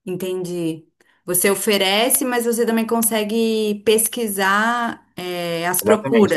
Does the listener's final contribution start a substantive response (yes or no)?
yes